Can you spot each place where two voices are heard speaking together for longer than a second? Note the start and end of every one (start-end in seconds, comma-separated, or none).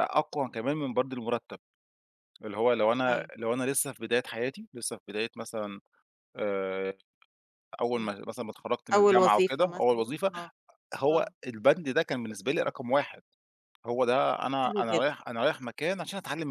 8.9-10.3